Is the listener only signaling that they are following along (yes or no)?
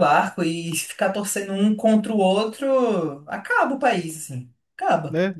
no